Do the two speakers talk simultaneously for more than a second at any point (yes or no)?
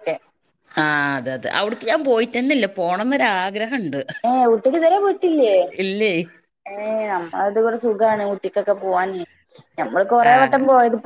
no